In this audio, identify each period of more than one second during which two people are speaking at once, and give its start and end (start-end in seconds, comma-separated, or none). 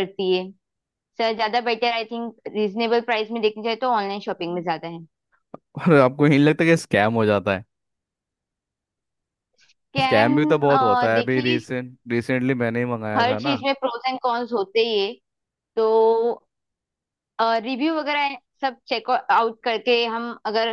none